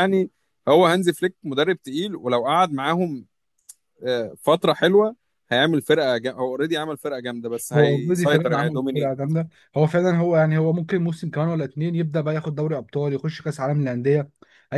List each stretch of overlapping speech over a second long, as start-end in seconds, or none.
7.7-9.1